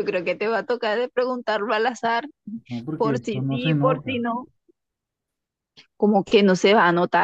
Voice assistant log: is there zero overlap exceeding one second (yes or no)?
no